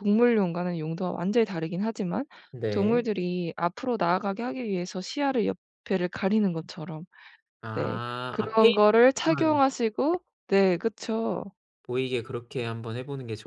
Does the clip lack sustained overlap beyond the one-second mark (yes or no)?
no